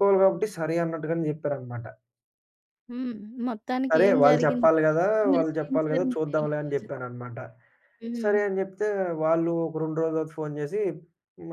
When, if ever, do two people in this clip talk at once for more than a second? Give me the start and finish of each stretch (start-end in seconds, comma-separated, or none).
3.9-6.9